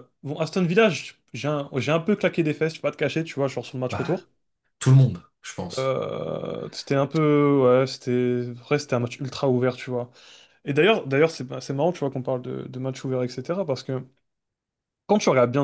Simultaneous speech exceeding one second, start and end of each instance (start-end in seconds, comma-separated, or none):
none